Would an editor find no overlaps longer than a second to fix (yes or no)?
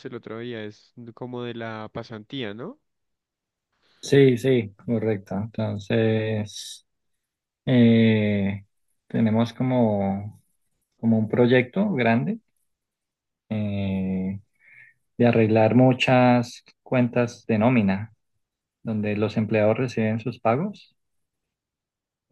yes